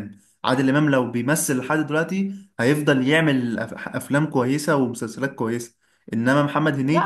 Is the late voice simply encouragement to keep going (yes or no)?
no